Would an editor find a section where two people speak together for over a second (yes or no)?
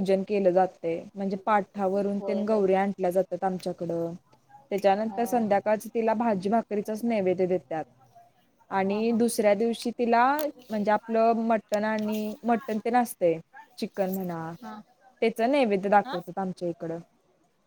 no